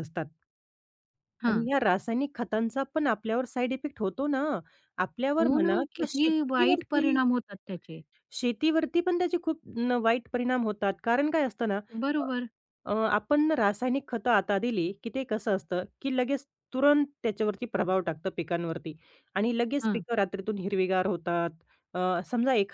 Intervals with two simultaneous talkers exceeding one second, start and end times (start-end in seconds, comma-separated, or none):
5.4-7.2